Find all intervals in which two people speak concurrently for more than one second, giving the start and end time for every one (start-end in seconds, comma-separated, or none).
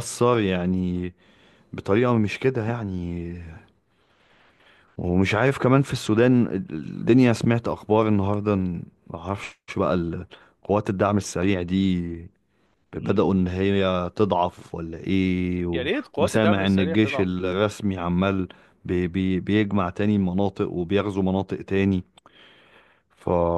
15.7-17.3